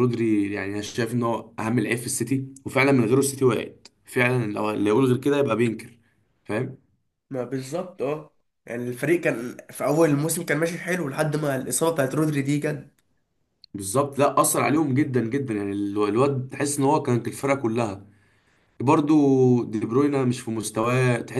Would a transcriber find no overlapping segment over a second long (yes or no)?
yes